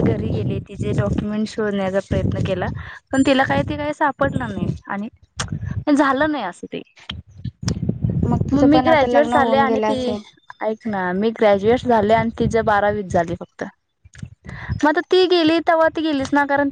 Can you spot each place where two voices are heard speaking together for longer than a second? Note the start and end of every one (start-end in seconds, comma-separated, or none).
8.5-10.2